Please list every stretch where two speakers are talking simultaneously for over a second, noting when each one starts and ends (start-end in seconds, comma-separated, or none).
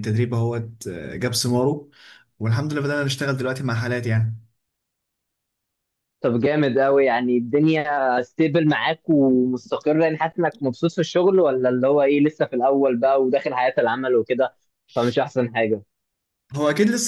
none